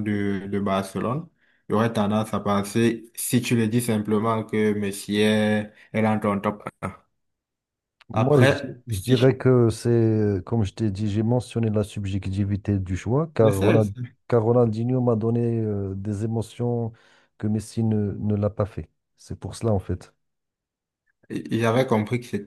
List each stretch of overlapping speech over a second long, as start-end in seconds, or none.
8.1-9.4